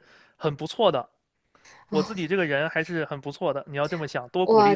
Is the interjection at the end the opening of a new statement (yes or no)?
yes